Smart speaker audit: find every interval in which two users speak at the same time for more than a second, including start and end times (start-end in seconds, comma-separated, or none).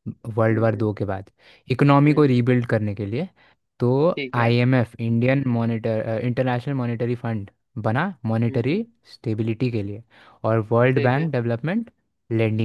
none